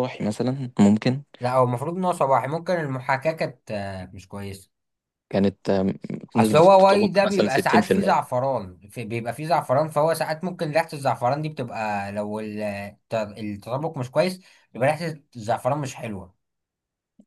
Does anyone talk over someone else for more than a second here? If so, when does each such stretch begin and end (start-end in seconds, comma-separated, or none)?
6.3-8.3